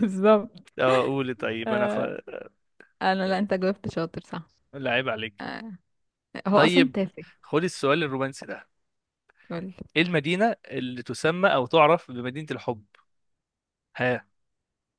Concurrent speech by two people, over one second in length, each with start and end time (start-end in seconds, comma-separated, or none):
none